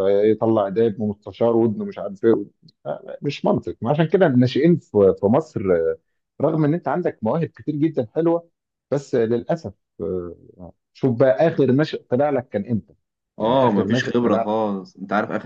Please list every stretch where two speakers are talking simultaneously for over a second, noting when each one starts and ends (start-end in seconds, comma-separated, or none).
13.4-14.6